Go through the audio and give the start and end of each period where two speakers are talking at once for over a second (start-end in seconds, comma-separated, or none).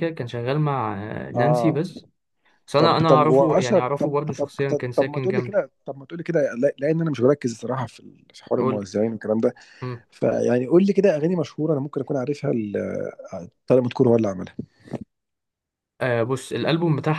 2.8-5.6